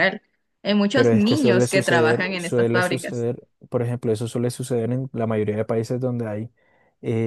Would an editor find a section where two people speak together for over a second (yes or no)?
yes